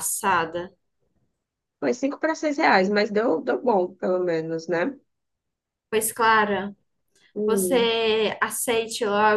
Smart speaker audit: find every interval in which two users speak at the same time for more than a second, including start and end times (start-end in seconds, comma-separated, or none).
none